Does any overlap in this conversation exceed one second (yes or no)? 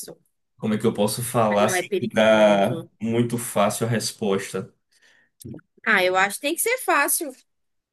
yes